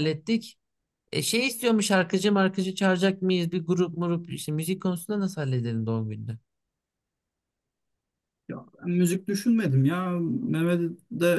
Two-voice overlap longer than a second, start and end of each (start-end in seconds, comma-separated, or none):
none